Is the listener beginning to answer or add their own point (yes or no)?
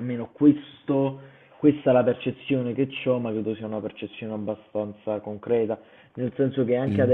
no